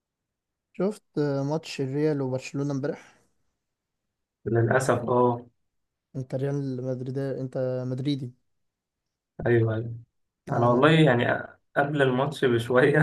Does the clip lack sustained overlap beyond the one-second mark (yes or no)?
yes